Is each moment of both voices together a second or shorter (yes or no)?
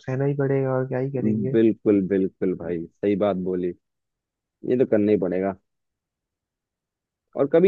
yes